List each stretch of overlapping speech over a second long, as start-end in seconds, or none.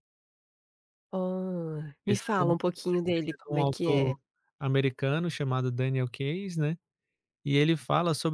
2.1-4.1